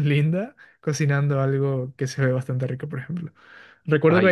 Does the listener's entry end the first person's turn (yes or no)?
no